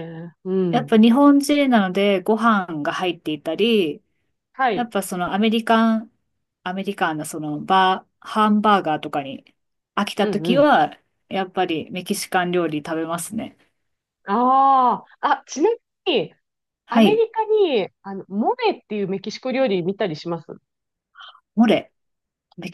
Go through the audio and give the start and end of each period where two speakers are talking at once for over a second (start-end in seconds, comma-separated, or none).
none